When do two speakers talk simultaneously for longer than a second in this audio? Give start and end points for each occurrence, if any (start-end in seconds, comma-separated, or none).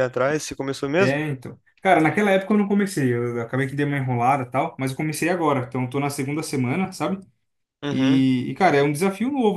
none